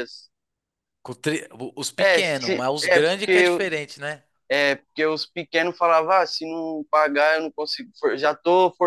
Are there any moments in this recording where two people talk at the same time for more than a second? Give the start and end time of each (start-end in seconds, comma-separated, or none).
2.0-3.6